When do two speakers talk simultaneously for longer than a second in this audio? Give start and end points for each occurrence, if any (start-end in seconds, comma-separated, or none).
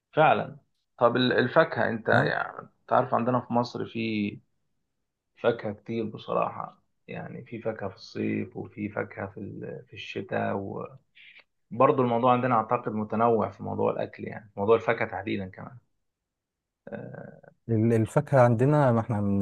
none